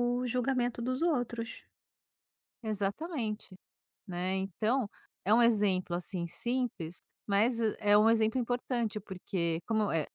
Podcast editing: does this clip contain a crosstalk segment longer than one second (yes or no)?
no